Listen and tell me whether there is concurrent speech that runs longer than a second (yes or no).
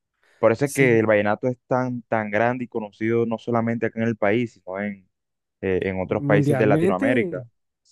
yes